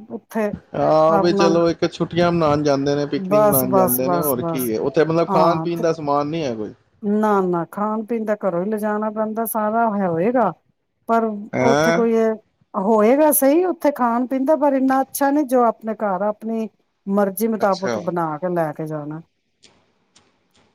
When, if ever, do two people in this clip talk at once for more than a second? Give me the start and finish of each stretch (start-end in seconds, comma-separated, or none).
3.3-4.7